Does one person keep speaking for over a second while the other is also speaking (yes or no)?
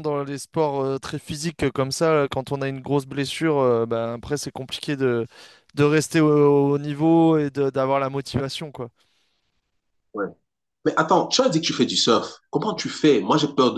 no